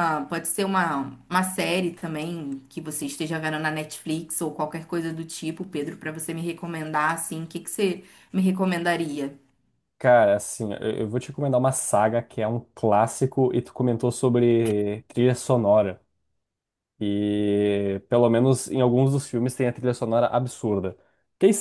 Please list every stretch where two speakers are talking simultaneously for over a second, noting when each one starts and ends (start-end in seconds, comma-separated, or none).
none